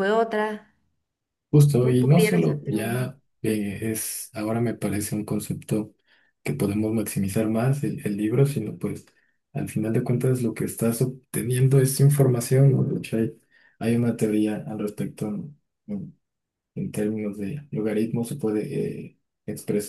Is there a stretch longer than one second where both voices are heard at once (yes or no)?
yes